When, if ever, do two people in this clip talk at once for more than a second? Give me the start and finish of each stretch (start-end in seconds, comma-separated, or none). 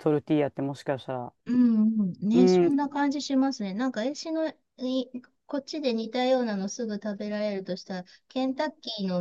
none